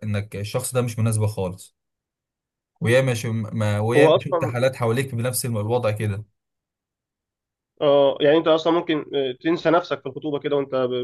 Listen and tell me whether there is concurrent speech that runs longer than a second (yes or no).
no